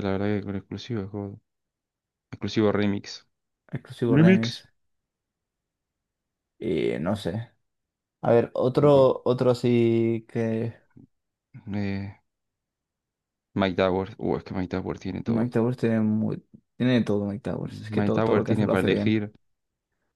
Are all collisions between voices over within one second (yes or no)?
no